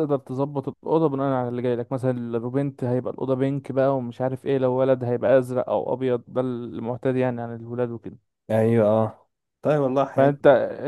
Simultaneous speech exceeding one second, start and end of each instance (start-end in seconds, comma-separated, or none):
none